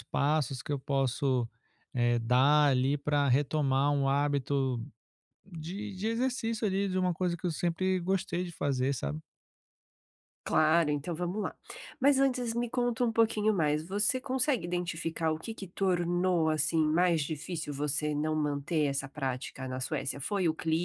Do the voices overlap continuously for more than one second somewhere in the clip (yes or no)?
no